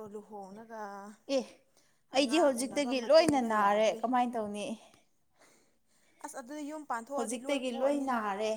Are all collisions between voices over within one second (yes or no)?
no